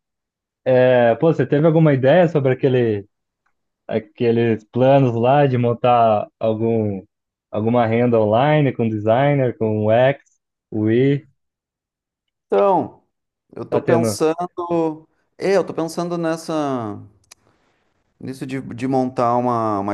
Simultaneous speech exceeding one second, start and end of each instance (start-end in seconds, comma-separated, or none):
none